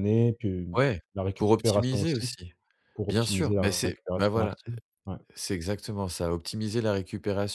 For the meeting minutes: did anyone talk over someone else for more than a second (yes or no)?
yes